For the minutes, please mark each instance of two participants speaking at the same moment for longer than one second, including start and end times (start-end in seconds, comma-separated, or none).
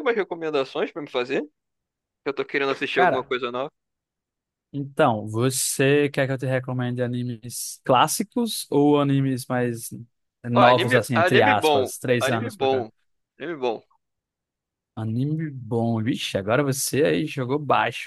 10.5-12.9